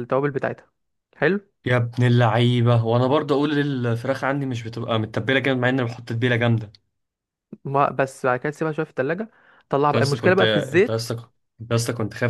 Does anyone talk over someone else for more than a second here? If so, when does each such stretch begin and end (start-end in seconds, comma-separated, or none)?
9.8-11.1